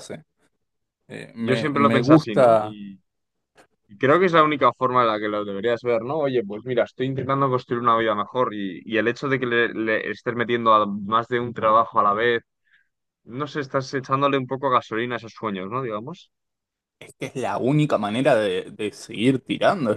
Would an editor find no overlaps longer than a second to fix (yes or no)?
no